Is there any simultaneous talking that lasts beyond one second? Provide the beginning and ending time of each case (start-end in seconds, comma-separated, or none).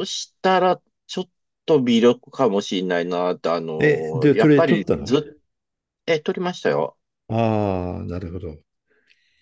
3.8-5.2